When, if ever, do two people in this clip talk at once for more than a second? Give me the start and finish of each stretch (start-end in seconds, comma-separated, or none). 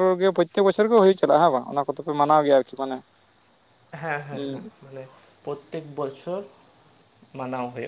none